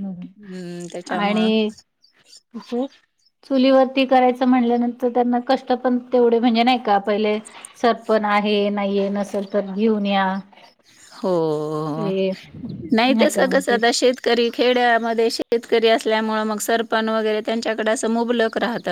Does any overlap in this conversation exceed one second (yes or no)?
no